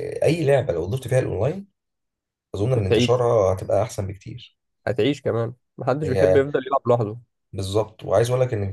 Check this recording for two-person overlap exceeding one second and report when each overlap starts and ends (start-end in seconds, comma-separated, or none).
none